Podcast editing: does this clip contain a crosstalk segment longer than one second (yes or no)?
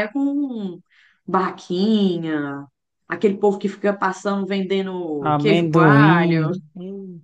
yes